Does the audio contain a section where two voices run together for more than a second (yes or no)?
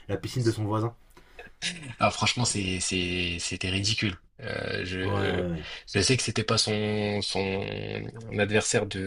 no